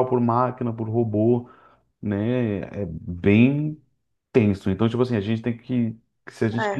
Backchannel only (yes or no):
yes